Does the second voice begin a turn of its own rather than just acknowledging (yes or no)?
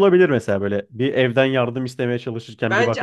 yes